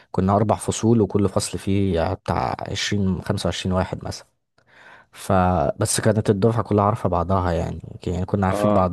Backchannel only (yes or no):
yes